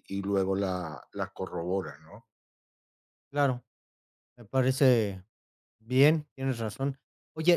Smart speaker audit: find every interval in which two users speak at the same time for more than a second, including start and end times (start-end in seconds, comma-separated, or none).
none